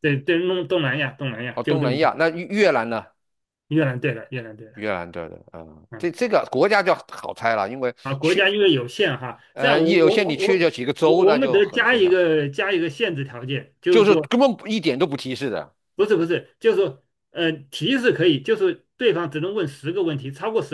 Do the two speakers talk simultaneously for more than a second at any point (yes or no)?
yes